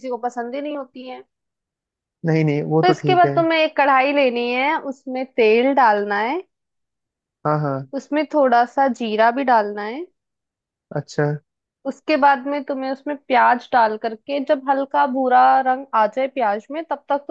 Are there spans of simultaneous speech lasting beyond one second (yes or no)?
no